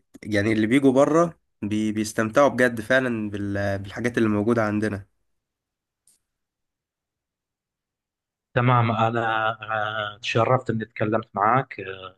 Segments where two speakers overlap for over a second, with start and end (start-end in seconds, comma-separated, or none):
none